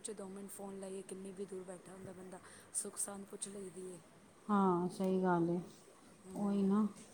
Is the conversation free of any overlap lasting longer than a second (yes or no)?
yes